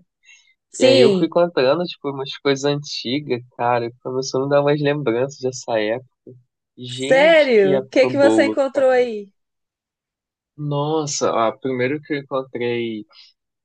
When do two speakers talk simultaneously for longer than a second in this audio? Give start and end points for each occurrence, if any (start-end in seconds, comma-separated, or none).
6.9-9.1